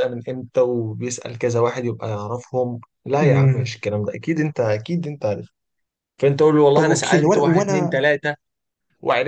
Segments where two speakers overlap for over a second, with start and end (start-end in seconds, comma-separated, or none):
6.7-8.0